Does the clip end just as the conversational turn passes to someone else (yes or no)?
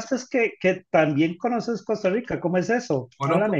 yes